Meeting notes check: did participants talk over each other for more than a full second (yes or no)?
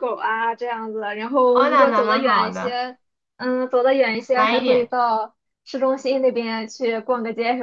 yes